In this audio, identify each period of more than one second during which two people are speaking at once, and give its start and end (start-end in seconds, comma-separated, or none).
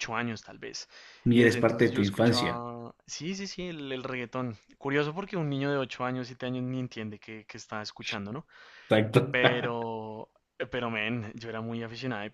1.3-2.6